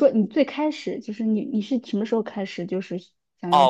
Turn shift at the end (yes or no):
yes